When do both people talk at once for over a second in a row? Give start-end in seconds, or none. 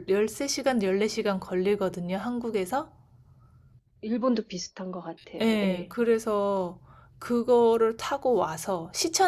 none